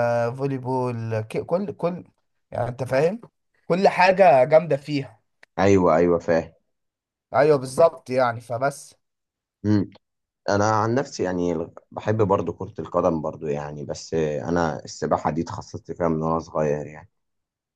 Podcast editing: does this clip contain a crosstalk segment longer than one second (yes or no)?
no